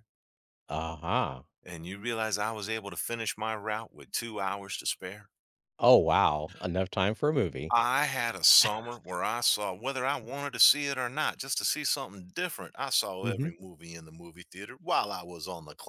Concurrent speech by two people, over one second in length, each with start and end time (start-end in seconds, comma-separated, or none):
none